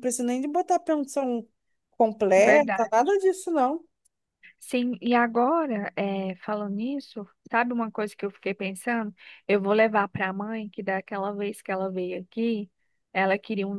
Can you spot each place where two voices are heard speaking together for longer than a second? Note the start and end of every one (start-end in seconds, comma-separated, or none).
none